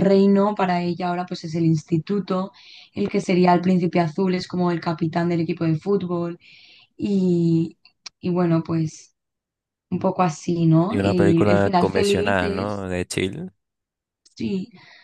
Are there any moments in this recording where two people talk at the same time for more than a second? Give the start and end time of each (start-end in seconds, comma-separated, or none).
10.9-12.9